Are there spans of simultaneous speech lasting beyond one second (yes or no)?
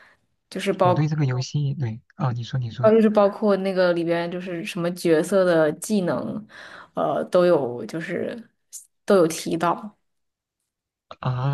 no